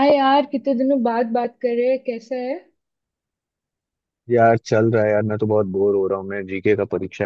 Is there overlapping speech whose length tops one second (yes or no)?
no